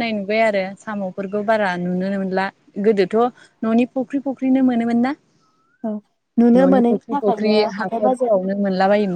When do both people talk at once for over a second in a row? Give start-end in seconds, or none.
6.6-8.3